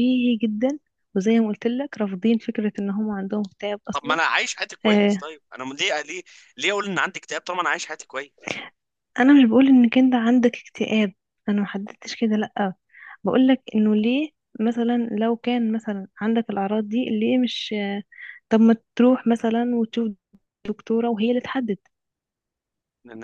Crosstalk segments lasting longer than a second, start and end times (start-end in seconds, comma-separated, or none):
none